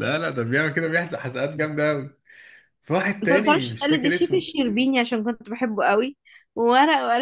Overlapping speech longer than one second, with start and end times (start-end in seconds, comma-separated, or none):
3.2-4.5